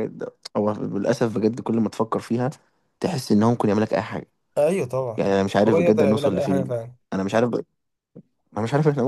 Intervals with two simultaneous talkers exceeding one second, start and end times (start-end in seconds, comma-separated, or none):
5.2-6.7